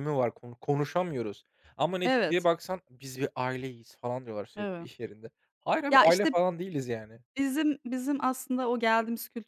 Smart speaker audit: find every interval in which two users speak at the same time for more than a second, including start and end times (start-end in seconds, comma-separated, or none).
none